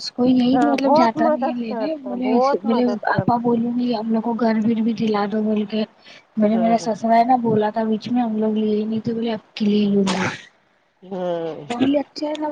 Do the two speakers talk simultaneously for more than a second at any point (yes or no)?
yes